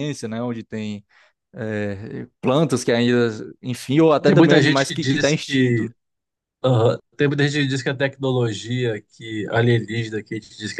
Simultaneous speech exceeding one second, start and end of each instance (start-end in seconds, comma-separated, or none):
4.2-5.8